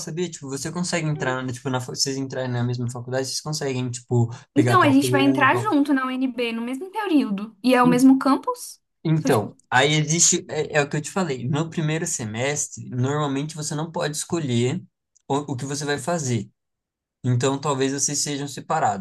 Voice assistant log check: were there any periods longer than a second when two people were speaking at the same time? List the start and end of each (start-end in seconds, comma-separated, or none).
4.5-5.8